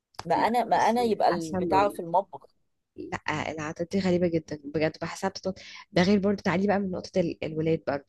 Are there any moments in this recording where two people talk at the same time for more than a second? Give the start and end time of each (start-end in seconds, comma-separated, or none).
0.7-2.0